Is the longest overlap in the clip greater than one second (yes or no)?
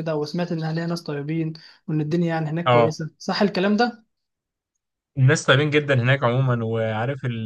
no